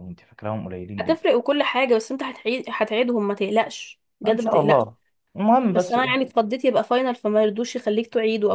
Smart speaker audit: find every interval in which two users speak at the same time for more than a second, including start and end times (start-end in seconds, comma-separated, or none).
none